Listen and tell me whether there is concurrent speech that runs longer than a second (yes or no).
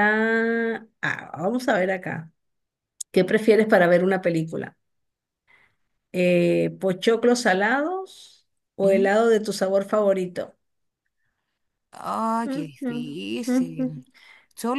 yes